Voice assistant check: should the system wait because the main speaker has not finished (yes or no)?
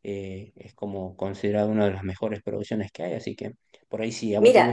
no